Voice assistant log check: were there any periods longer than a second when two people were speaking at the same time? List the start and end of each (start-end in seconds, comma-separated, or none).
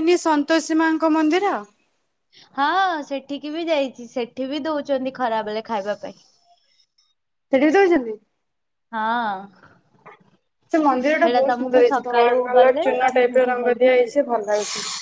11.2-13.9